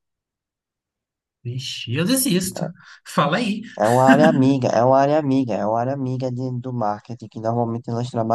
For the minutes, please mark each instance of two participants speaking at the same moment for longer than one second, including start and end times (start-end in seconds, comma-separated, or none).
none